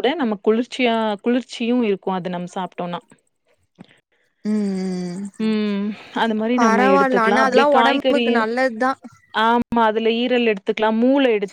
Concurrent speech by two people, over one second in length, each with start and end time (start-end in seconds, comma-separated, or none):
6.6-8.4